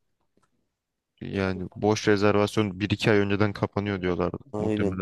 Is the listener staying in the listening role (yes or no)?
no